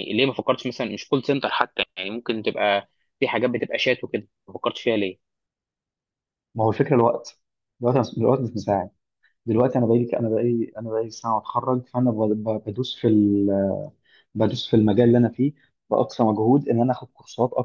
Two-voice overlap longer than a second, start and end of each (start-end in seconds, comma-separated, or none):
none